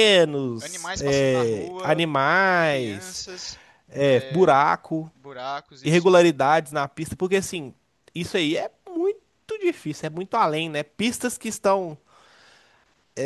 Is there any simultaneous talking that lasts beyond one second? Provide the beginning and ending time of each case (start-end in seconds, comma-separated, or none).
0.6-2.0